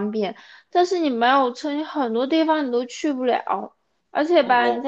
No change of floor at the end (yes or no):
yes